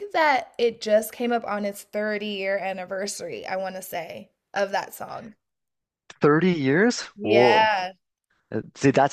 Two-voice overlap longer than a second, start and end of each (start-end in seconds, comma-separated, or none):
none